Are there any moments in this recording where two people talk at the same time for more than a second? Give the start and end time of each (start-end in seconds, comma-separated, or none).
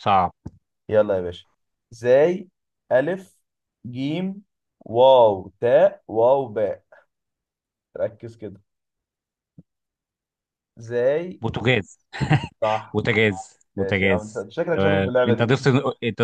13.8-15.5